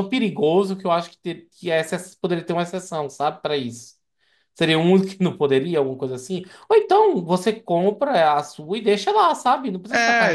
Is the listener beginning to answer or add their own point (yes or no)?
yes